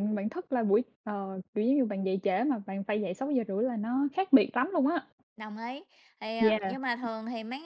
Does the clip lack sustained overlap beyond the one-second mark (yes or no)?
yes